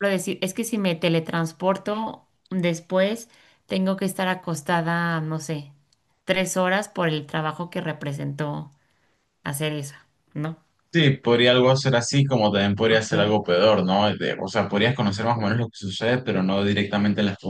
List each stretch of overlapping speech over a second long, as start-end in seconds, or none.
none